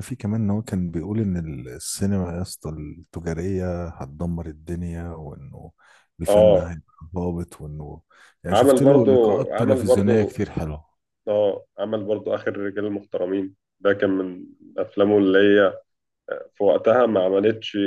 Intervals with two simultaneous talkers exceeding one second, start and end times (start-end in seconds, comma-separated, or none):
8.5-10.3